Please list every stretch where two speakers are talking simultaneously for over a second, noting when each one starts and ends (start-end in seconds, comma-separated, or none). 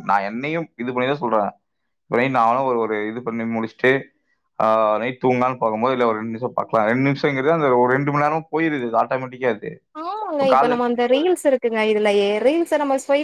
none